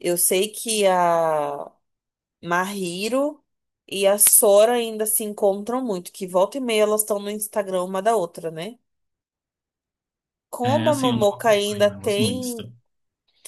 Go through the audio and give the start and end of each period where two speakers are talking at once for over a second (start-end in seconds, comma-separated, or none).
10.6-12.6